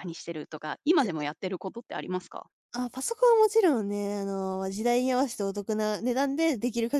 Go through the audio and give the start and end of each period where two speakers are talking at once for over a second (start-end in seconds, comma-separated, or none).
none